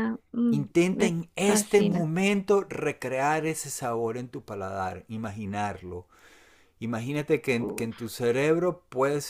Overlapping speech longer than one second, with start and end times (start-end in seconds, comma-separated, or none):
0.5-2.1